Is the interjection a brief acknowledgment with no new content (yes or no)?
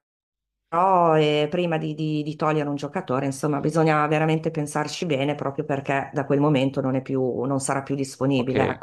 no